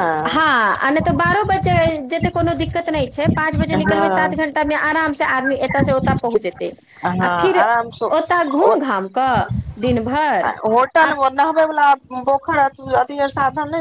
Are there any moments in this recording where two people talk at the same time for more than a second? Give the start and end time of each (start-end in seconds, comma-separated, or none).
none